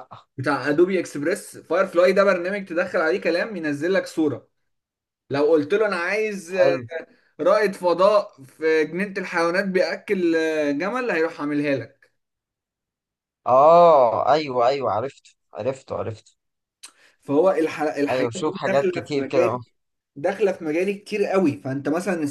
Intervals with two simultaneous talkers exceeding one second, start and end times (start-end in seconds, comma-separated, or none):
18.1-19.6